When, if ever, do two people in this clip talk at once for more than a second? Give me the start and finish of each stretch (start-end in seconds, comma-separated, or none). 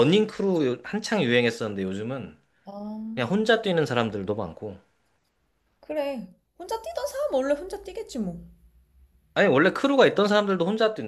none